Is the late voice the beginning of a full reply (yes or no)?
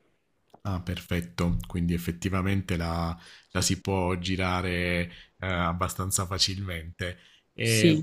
no